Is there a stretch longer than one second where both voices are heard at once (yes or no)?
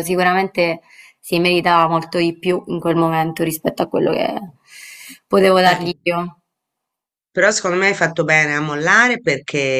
no